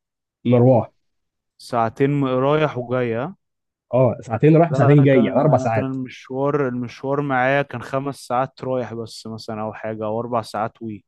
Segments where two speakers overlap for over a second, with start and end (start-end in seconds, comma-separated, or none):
4.7-6.0